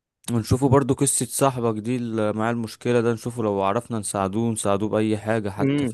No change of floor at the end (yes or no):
no